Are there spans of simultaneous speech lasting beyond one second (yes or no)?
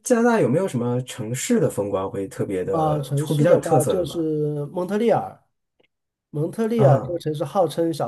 yes